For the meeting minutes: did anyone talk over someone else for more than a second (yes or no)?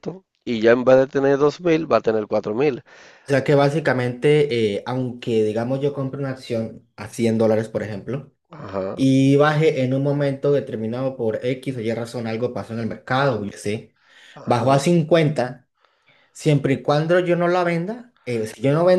no